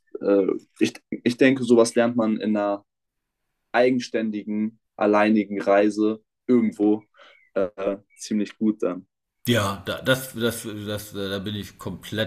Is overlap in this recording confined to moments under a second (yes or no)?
yes